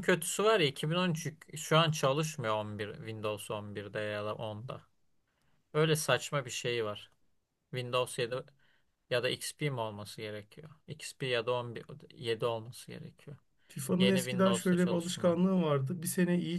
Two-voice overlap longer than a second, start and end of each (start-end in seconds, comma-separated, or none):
14.0-15.3